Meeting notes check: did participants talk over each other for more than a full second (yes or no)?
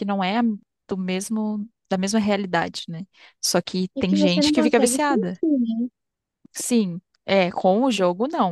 yes